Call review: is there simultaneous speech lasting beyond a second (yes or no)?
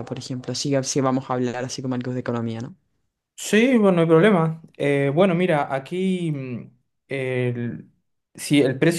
no